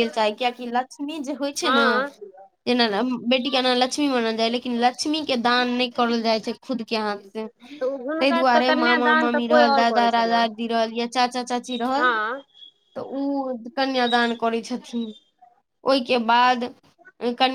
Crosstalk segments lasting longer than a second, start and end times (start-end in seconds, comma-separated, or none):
8.2-10.4